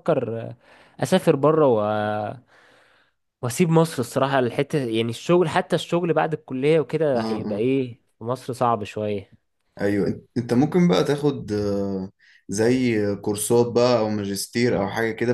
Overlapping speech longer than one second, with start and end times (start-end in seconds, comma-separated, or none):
none